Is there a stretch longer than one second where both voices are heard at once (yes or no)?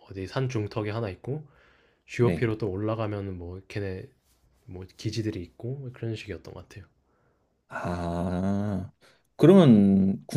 no